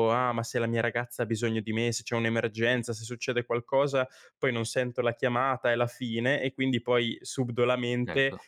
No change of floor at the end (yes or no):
yes